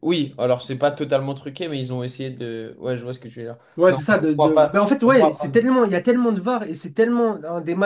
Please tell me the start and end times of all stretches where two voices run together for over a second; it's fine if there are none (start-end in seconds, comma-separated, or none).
3.8-5.5